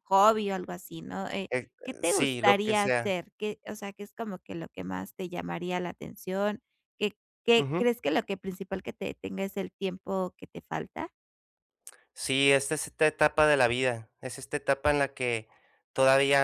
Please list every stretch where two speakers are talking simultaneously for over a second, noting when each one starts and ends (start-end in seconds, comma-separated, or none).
1.5-3.1